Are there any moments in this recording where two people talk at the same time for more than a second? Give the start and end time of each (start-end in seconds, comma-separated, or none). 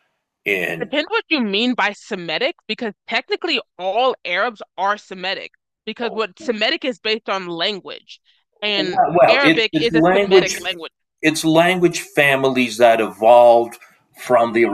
8.8-10.6